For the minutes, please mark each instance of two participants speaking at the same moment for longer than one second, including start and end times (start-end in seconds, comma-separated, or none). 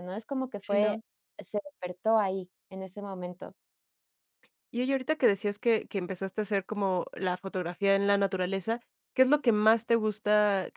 none